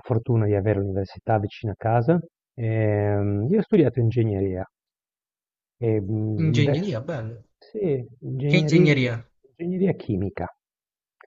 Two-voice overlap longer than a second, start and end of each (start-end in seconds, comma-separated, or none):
none